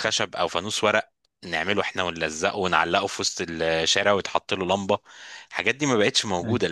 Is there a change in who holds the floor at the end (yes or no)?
no